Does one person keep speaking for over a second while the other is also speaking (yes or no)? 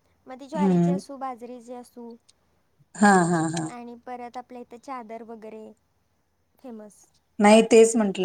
no